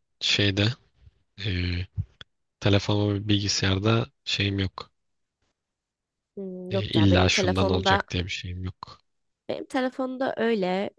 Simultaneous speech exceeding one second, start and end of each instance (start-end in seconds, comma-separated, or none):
6.7-8.0